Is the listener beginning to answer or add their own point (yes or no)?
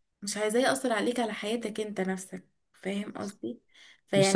no